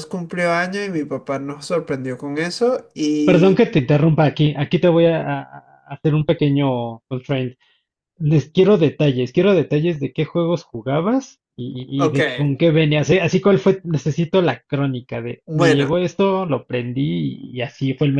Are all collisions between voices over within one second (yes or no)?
yes